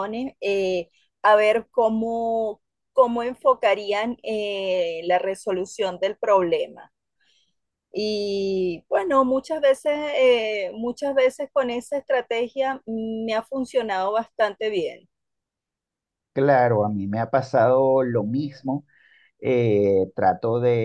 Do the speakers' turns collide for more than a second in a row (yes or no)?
no